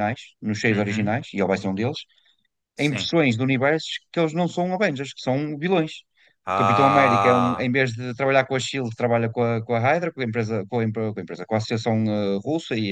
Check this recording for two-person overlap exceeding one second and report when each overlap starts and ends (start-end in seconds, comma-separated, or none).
6.5-7.7